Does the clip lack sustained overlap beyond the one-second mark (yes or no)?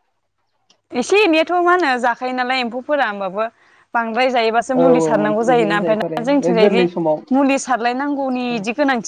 no